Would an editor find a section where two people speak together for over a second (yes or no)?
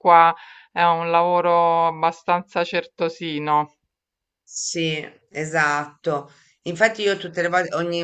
no